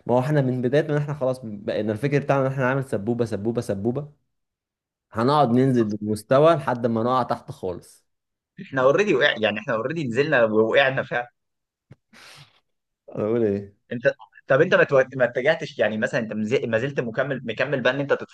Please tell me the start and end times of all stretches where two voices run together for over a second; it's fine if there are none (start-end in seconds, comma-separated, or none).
none